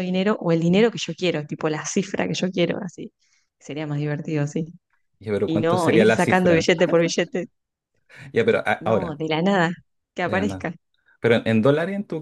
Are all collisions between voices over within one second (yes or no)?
no